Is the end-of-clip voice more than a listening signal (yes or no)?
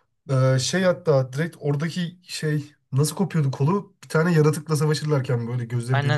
yes